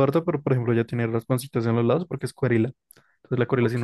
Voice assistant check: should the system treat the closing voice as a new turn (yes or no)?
no